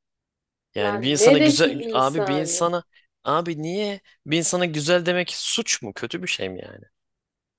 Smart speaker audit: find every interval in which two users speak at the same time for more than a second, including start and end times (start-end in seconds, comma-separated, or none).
0.8-2.6